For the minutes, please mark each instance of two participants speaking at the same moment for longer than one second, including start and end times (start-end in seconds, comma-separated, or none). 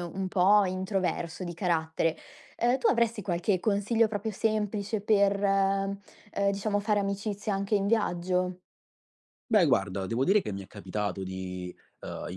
none